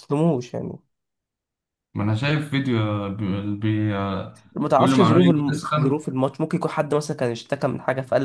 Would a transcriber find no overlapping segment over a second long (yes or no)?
no